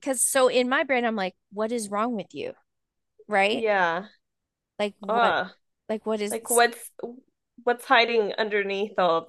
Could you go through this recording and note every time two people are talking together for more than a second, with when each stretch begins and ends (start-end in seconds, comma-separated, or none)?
none